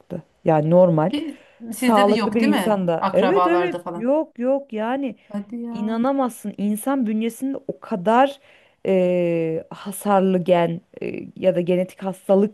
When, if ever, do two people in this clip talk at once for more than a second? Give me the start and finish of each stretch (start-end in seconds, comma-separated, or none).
1.7-4.1